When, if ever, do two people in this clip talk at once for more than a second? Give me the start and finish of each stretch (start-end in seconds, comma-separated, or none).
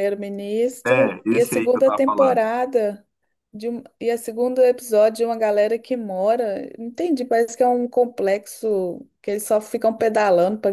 0.9-2.4